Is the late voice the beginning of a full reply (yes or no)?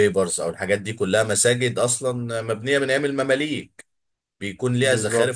no